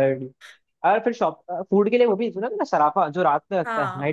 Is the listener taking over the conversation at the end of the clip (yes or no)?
yes